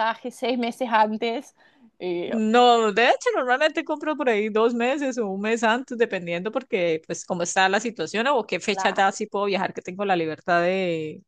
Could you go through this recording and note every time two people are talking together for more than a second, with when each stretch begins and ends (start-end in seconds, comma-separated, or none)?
none